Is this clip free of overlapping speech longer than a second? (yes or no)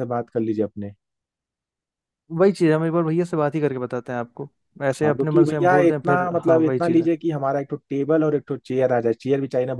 no